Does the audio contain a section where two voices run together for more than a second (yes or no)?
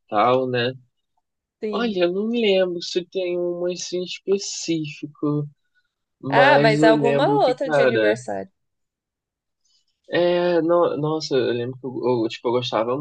yes